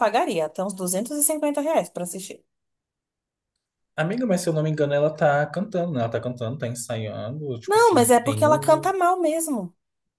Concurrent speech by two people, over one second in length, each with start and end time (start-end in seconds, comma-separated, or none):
7.7-8.9